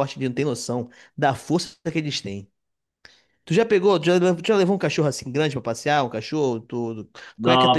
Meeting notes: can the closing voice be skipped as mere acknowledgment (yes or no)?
no